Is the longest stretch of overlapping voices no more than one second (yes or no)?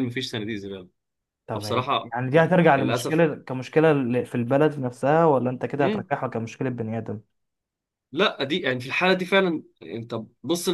no